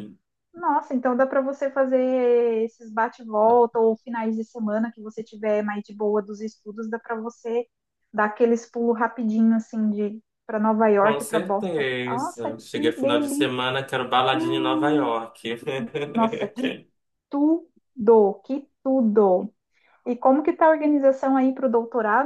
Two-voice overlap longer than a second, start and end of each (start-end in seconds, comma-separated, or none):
11.0-13.6